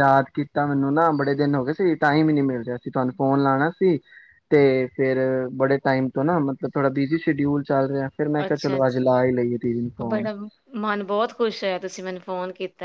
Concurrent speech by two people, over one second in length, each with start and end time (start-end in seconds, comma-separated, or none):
8.4-10.2